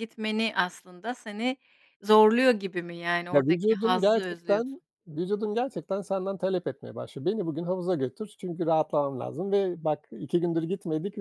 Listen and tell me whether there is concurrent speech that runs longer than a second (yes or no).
yes